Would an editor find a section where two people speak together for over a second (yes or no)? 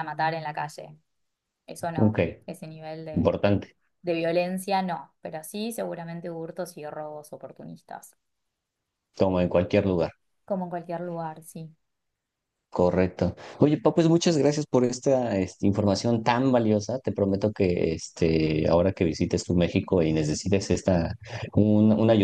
no